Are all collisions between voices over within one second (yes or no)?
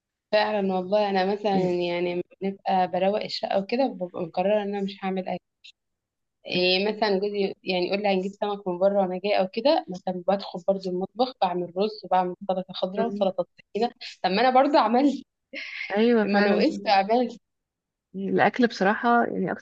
yes